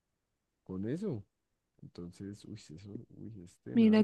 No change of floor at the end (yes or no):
no